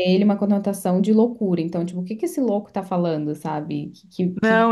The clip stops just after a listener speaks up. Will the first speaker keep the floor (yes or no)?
no